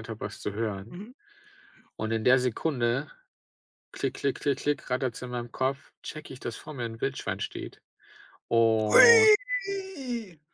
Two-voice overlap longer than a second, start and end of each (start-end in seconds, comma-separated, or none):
none